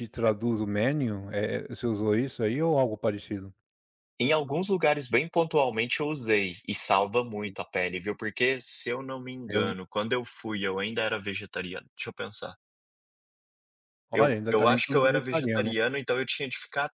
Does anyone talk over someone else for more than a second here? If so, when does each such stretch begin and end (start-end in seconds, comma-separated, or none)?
14.1-15.7